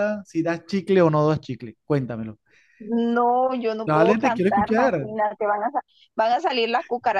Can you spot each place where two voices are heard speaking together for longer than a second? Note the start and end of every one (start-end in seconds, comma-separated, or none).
3.9-5.1